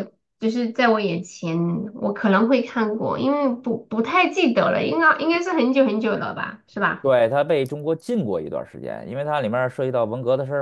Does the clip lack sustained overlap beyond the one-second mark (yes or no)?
yes